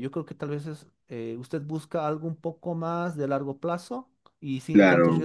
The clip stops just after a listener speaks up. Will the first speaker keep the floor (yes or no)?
no